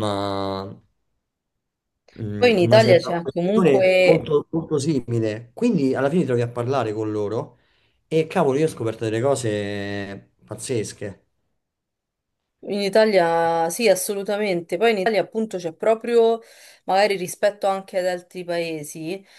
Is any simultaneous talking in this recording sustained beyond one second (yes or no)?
yes